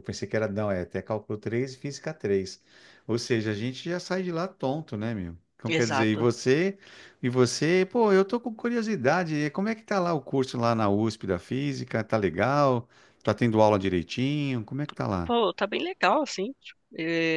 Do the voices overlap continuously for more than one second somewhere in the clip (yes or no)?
no